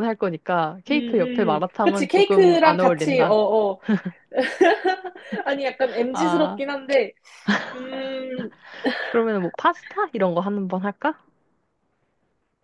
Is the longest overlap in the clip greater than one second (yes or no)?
yes